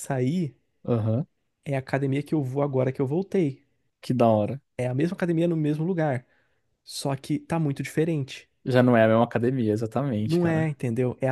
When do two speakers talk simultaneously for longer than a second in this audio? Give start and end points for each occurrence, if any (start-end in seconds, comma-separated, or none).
none